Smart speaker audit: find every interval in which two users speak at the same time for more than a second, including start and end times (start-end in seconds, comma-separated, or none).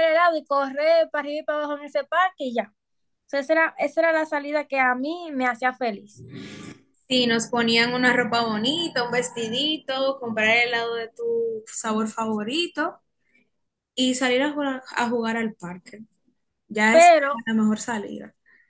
none